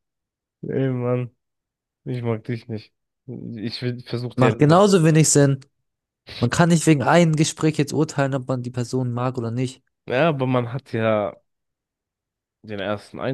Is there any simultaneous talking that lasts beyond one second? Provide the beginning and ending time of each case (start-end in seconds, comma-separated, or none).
none